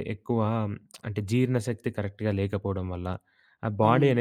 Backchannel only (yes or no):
yes